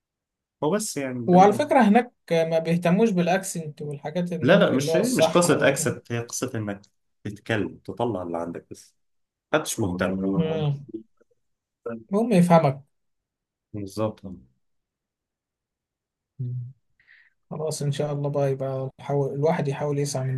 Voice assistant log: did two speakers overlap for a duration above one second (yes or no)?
yes